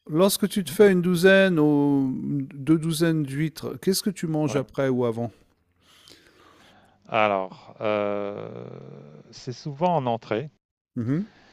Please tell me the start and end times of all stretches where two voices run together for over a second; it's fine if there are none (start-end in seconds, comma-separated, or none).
none